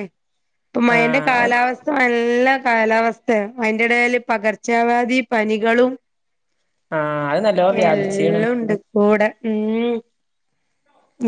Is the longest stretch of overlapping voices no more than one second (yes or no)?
yes